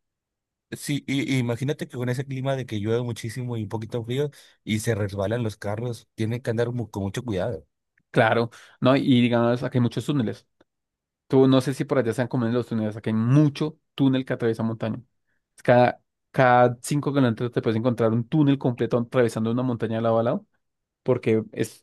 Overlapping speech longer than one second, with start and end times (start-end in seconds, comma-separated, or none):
none